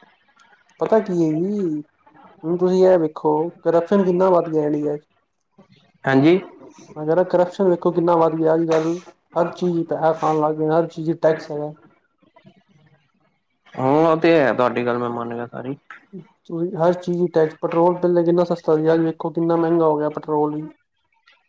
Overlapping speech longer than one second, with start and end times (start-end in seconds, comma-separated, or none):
none